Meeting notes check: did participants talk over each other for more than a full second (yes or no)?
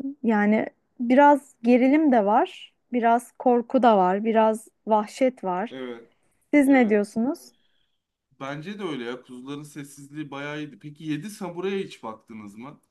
no